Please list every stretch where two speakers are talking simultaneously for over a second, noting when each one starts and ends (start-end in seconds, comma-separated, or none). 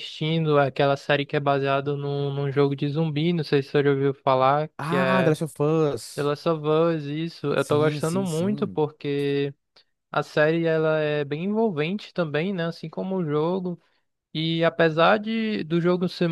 7.5-8.8